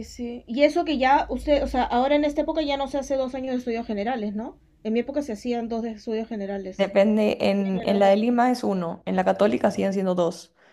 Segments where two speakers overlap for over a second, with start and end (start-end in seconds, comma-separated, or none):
none